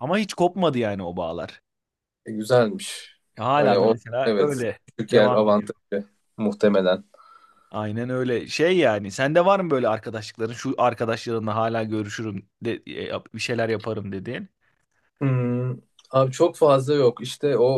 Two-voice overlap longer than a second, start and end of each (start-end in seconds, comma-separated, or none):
3.6-5.7